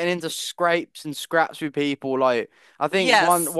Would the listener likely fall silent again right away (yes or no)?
yes